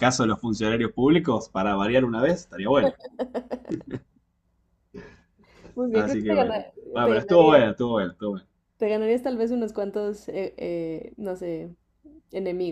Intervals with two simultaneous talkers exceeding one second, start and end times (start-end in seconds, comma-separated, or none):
5.9-7.6